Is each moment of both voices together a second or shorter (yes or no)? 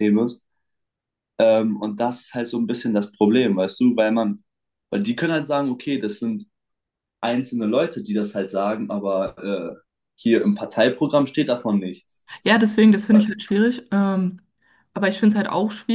yes